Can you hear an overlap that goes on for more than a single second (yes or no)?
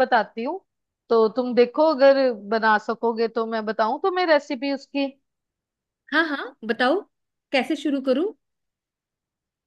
no